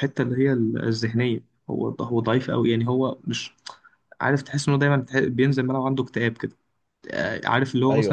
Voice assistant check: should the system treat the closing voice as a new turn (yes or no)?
no